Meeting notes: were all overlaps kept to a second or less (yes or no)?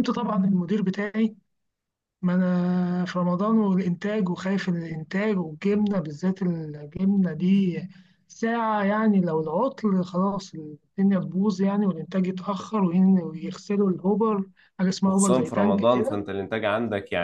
no